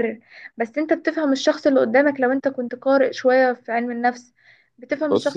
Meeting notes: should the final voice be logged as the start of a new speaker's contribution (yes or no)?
no